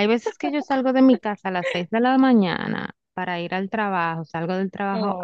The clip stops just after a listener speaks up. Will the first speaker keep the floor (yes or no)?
yes